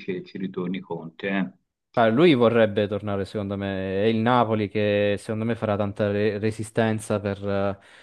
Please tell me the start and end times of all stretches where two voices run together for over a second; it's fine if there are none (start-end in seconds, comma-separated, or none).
none